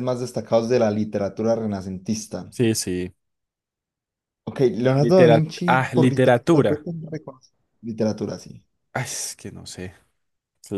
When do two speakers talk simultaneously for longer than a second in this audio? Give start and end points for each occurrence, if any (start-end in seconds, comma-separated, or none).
5.0-6.8